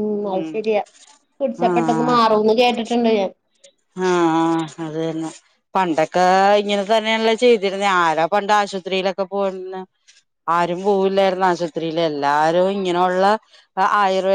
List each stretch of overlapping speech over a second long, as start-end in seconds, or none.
none